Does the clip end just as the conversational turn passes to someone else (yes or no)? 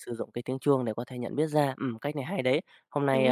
no